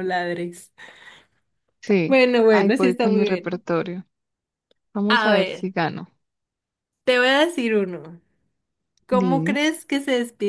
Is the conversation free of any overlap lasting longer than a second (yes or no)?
no